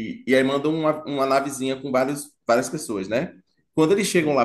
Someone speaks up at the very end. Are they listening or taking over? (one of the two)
listening